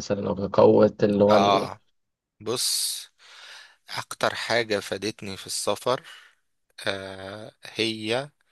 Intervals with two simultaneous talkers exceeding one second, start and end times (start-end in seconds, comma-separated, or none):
none